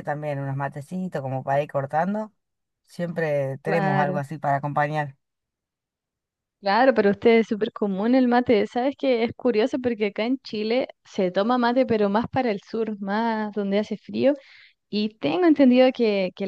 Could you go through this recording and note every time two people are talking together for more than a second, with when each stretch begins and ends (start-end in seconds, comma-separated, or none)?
none